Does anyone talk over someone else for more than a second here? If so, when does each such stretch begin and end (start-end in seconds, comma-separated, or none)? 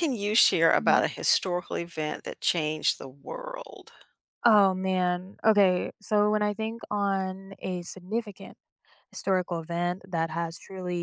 none